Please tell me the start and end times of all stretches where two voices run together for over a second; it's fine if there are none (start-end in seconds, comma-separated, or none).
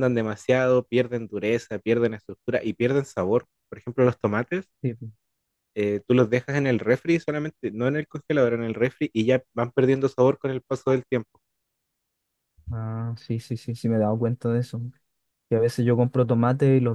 none